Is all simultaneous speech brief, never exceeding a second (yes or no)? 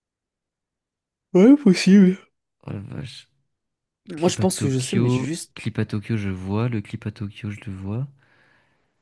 no